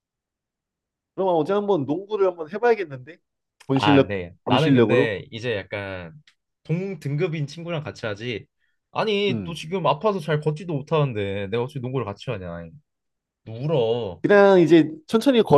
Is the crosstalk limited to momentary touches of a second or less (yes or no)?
no